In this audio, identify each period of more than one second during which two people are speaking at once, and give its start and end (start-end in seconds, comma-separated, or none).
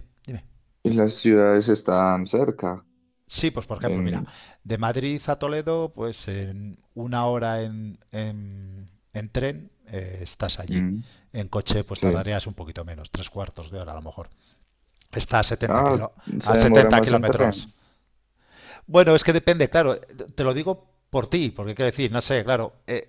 15.7-17.7